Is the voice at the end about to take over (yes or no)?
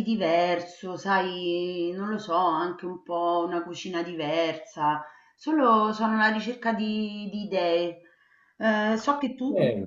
no